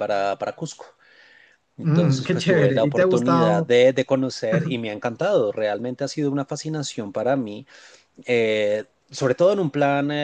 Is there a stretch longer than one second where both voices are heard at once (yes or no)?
yes